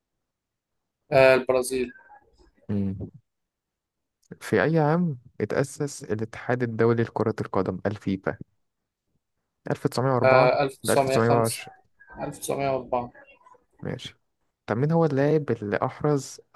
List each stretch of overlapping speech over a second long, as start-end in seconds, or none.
10.2-11.6